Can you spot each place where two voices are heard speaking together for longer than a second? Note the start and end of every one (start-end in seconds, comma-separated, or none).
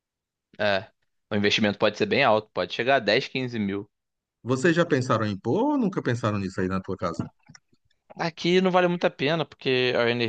none